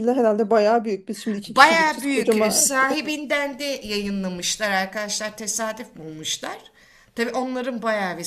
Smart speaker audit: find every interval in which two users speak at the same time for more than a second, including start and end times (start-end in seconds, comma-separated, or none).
1.5-2.7